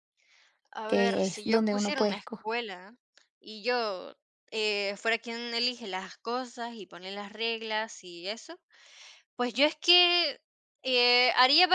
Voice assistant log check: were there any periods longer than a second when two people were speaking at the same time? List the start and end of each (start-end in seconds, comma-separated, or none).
0.9-2.5